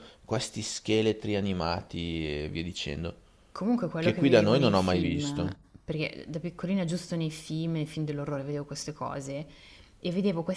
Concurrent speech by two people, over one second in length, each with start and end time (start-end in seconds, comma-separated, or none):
4.0-5.6